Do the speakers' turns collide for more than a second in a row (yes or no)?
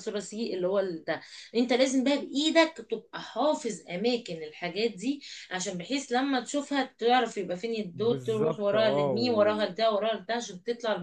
yes